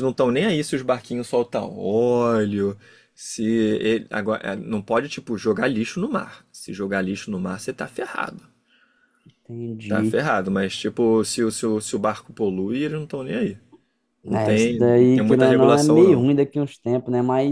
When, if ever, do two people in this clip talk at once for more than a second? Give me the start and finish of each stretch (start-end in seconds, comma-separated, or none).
14.3-16.3